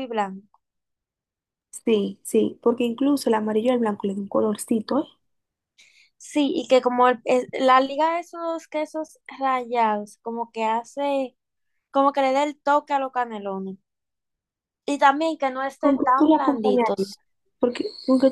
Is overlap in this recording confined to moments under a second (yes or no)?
no